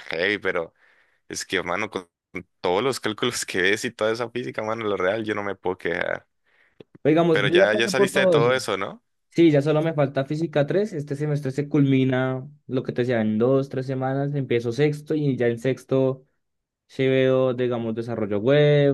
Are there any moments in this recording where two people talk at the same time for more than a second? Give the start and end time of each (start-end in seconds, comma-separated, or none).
7.3-8.6